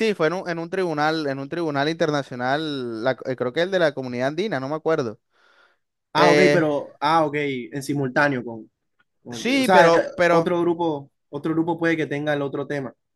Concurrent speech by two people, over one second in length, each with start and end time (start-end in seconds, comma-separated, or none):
9.3-10.5